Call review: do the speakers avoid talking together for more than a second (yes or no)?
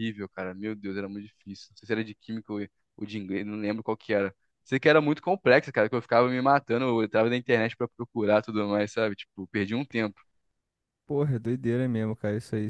yes